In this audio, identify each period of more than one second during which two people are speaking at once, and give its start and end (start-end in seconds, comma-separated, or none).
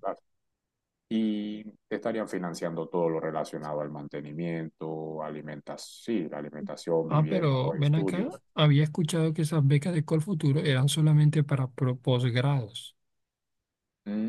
7.1-8.4